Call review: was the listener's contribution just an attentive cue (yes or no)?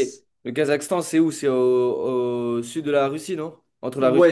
no